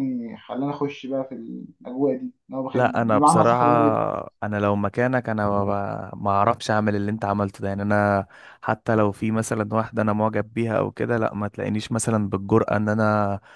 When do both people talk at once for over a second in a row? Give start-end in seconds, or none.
2.7-4.1